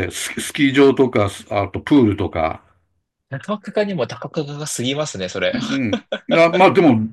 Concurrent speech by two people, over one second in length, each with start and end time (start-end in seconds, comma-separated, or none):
none